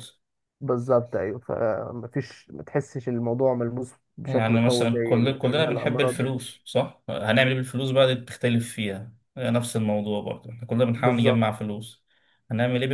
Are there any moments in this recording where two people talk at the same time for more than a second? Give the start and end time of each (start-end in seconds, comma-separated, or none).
4.2-6.3